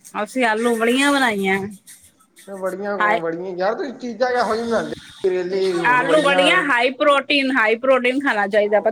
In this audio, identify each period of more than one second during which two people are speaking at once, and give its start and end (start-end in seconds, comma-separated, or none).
none